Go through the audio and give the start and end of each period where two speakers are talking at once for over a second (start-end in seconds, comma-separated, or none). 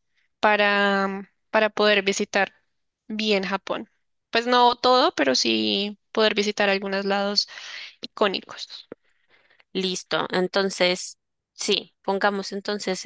none